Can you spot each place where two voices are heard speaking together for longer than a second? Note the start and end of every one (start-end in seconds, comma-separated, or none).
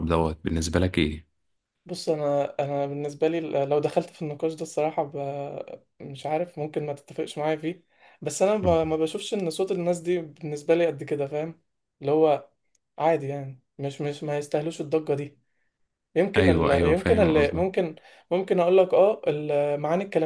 16.4-17.7